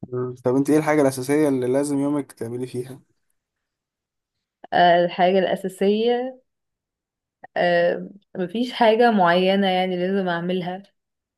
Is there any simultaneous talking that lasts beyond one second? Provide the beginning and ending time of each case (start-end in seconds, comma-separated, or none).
none